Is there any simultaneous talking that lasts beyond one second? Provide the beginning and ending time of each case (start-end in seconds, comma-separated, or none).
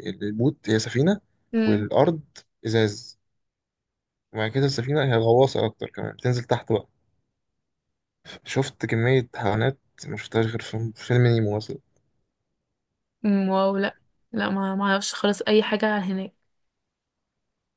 none